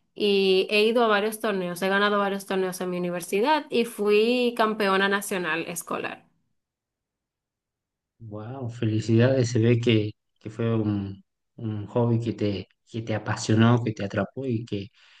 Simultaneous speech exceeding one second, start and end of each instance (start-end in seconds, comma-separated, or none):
none